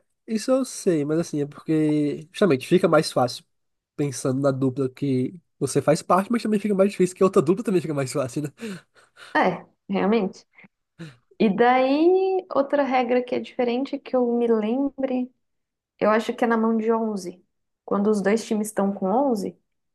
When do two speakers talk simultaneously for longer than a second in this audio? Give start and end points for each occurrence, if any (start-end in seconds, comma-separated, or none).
none